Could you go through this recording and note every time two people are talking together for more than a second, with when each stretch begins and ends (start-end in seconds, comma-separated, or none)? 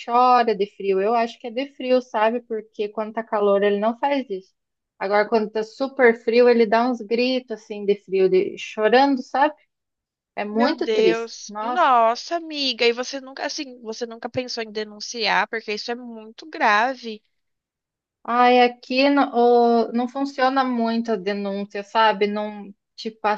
10.5-11.9